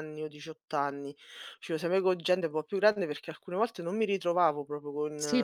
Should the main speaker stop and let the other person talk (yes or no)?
yes